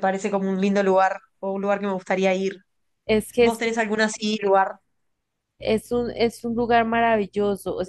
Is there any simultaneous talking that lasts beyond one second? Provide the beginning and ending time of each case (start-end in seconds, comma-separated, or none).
none